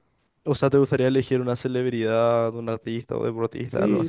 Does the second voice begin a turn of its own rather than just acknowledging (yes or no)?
yes